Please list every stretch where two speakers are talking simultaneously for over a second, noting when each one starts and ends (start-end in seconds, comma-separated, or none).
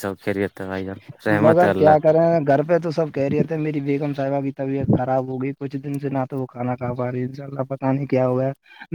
none